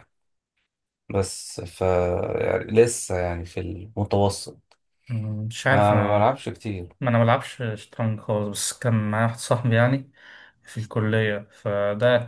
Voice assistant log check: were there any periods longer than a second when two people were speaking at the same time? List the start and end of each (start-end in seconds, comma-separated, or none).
none